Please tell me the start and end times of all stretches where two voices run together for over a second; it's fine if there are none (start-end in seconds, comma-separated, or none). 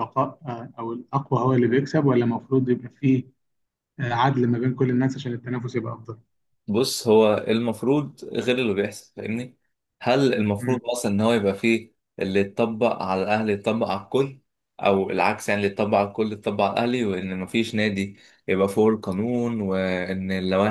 none